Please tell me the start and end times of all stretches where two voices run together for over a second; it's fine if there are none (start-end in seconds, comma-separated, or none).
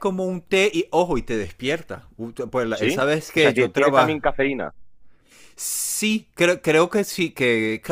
2.7-4.2